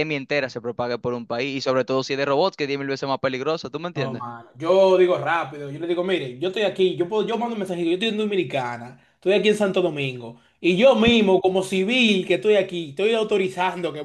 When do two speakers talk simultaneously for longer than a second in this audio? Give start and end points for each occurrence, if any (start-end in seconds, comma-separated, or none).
none